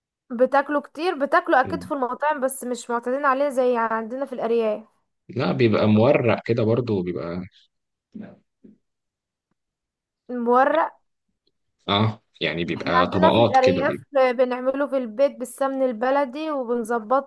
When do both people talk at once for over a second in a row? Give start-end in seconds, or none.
12.8-14.1